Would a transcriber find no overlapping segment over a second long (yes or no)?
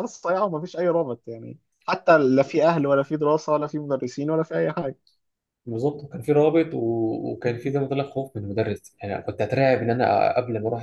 yes